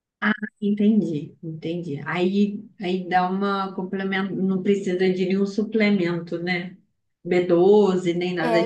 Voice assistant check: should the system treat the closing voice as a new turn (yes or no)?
yes